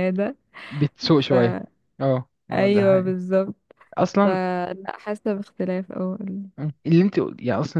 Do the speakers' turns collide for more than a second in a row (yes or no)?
no